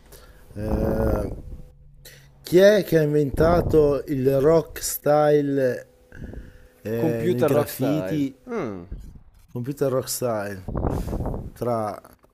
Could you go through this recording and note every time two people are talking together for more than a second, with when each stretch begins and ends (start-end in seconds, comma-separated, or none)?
7.0-8.3